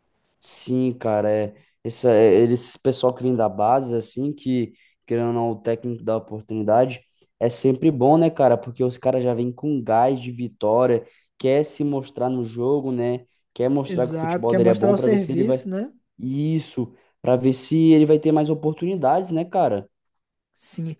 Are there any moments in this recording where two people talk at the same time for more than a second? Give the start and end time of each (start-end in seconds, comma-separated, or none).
13.8-15.6